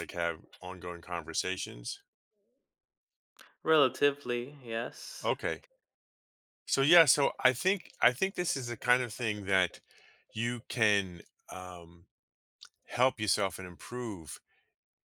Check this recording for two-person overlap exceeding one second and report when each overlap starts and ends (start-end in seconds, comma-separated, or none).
none